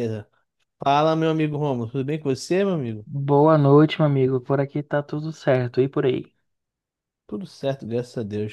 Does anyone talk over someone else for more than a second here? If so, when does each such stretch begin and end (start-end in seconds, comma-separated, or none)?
none